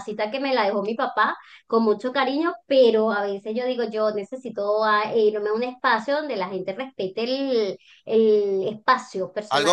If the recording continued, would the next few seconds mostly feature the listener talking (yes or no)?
yes